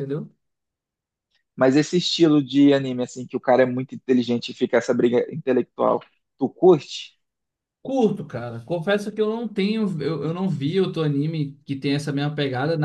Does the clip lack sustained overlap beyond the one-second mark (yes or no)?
yes